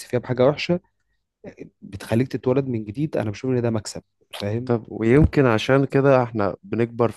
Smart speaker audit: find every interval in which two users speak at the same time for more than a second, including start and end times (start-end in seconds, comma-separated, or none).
none